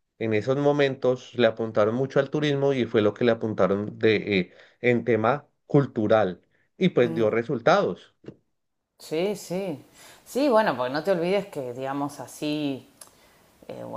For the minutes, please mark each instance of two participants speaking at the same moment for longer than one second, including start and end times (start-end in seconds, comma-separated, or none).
none